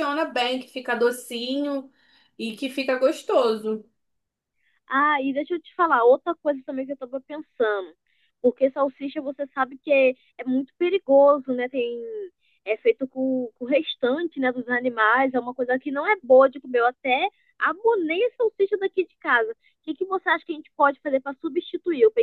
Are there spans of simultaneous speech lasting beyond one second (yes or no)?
no